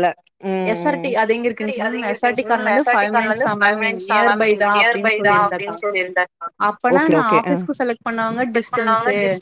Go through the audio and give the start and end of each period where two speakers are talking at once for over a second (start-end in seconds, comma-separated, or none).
2.3-5.8